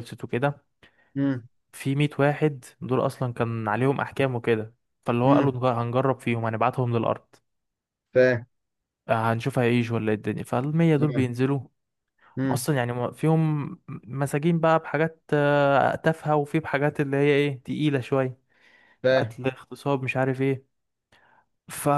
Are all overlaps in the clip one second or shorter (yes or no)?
yes